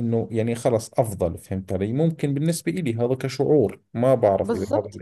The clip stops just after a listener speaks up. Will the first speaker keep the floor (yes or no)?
no